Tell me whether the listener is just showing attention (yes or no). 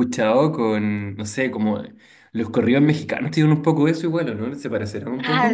no